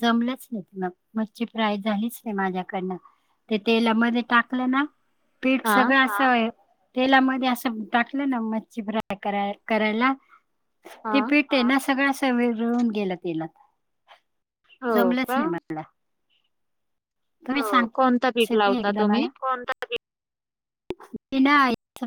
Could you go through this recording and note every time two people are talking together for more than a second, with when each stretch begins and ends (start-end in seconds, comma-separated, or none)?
17.9-19.3